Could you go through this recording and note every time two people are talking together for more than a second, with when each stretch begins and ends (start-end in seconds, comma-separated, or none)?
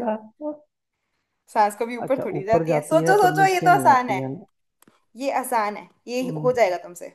2.0-4.2